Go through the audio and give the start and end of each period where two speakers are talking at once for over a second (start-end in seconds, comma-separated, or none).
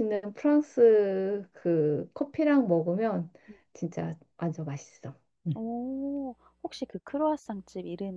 none